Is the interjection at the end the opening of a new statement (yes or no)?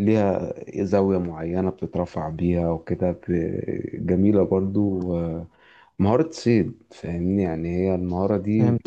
no